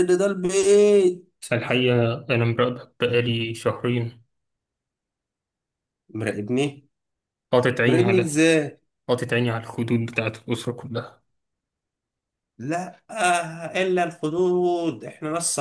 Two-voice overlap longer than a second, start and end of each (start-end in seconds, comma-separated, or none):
none